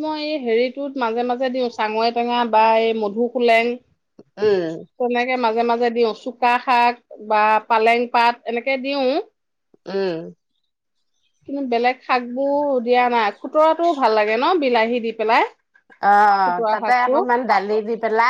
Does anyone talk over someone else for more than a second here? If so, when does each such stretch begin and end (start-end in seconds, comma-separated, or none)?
none